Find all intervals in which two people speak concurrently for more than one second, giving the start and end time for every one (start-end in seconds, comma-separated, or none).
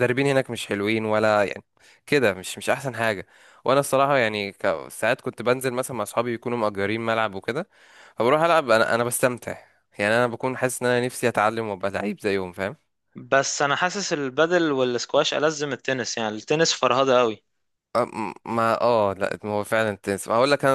none